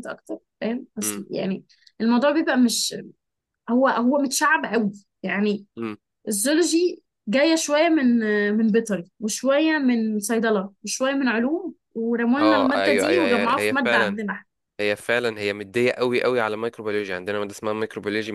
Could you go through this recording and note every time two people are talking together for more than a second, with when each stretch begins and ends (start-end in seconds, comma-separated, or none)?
12.4-14.2